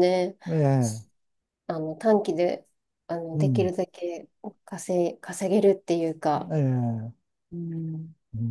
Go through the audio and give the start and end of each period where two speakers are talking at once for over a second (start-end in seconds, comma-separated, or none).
none